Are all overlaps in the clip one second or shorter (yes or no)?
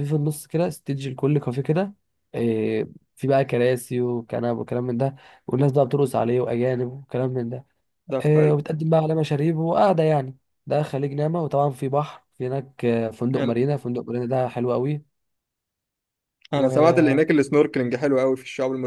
yes